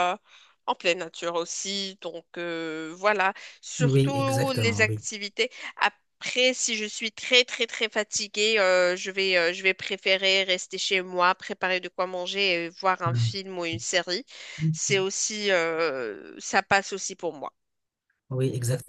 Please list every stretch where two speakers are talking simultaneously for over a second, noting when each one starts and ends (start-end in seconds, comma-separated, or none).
3.8-5.0